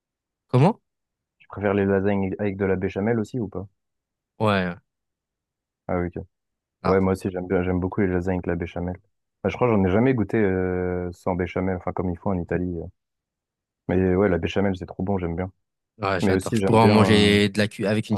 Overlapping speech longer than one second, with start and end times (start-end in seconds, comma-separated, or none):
16.2-17.6